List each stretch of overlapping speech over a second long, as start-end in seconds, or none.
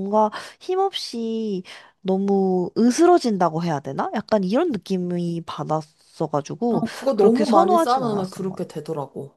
6.7-8.7